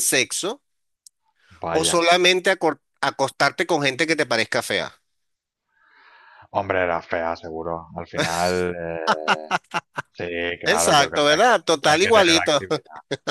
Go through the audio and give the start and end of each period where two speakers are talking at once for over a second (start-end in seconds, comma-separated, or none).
10.6-12.6